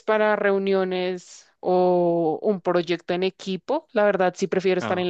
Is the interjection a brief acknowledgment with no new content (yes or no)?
yes